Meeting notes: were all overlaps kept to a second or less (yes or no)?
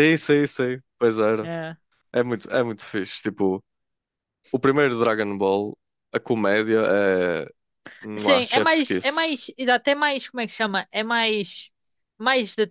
no